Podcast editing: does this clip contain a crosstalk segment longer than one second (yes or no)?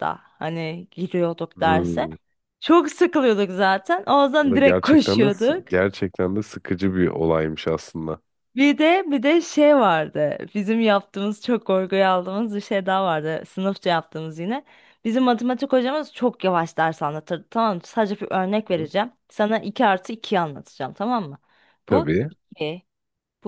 yes